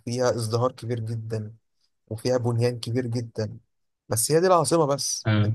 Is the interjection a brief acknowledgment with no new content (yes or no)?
yes